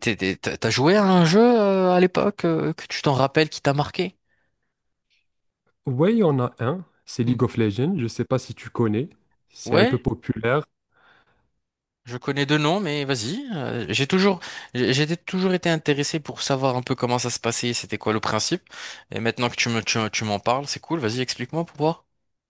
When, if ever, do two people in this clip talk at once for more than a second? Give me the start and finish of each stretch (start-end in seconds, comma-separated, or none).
none